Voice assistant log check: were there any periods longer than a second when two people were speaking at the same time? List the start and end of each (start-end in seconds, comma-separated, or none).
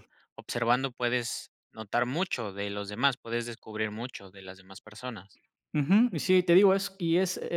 none